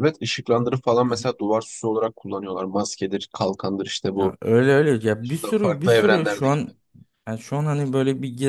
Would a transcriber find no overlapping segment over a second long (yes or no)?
no